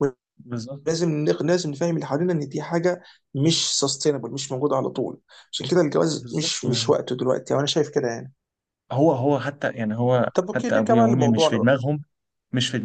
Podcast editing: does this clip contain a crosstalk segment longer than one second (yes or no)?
yes